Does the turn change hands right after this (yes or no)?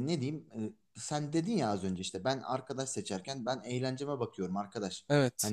no